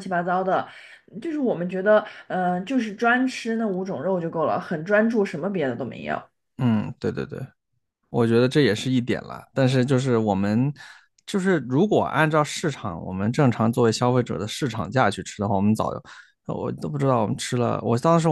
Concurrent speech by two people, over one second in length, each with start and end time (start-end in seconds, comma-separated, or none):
none